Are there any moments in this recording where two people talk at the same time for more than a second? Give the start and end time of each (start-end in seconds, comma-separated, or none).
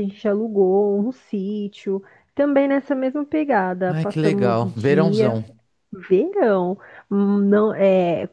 3.9-5.3